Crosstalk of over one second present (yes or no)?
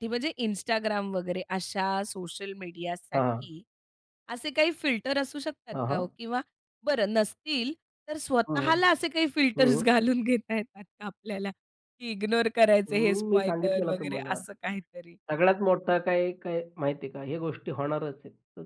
yes